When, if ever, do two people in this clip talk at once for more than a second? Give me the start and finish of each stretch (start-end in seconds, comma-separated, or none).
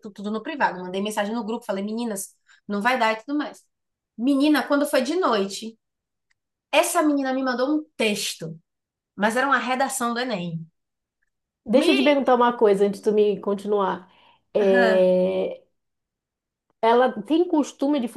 none